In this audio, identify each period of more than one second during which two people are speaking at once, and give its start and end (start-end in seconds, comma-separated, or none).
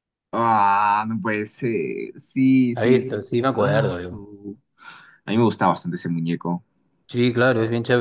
2.7-4.2